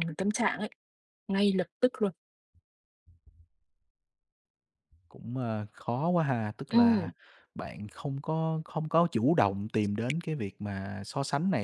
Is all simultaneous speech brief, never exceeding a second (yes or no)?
yes